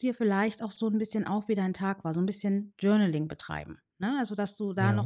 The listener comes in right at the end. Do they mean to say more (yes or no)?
no